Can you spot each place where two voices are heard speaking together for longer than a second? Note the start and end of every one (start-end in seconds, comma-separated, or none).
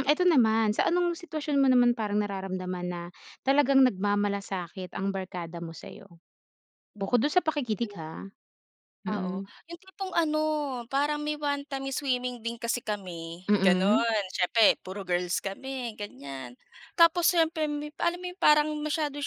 none